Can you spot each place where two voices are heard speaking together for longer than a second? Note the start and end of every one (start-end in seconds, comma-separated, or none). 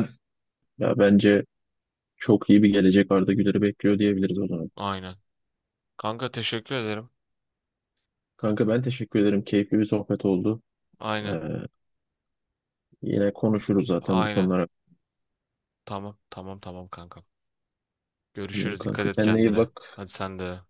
18.5-20.0